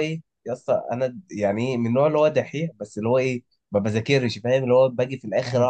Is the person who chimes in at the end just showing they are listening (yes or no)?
yes